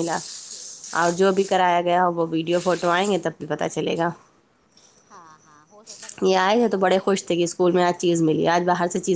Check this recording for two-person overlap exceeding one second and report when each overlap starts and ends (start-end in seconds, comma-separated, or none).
6.2-7.6